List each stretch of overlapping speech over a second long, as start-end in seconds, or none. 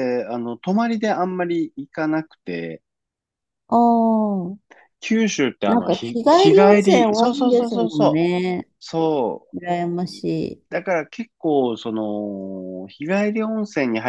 5.7-8.3